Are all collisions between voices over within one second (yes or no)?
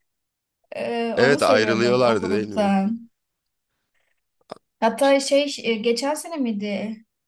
no